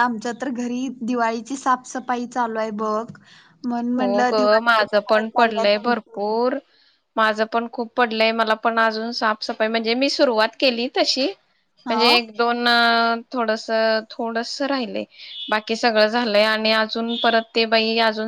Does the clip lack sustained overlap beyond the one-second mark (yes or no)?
no